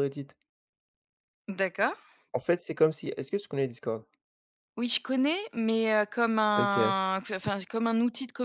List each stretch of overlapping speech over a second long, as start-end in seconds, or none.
none